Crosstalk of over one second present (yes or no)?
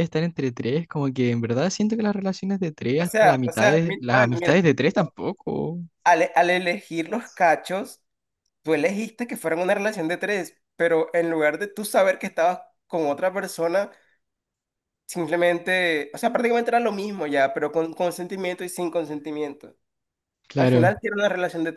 yes